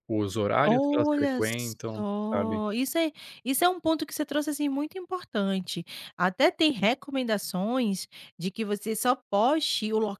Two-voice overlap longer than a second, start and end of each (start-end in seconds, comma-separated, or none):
0.6-2.6